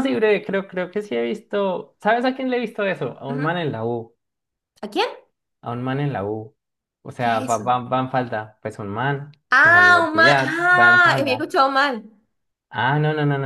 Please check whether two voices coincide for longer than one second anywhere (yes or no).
yes